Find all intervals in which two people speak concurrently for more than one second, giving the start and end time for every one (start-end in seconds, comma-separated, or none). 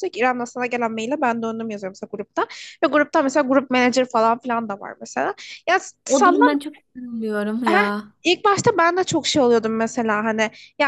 none